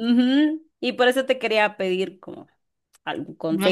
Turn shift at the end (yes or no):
yes